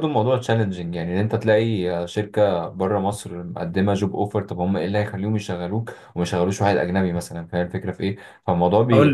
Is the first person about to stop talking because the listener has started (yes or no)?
no